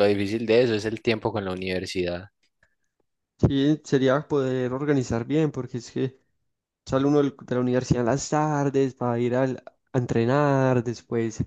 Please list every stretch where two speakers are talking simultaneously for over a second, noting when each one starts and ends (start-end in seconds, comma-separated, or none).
none